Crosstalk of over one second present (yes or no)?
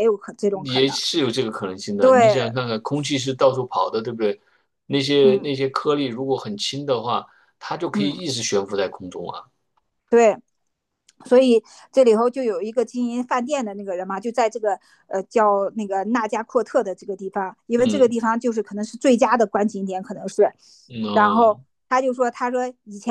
no